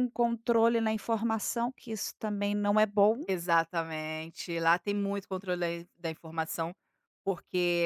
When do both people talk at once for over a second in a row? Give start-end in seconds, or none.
none